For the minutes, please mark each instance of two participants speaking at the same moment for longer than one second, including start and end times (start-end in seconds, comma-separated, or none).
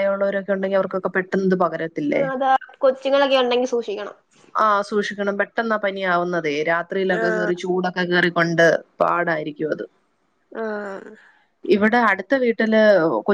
none